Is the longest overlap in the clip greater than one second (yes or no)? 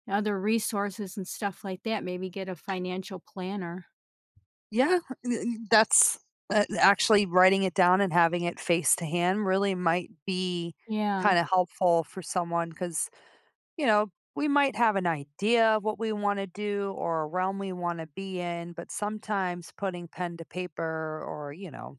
no